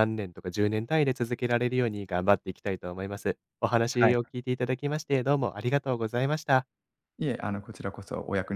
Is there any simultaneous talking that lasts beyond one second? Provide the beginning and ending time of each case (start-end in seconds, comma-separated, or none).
none